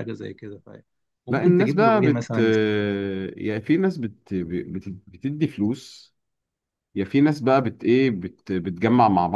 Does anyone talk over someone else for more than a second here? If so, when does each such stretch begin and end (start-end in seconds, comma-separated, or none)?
1.3-3.1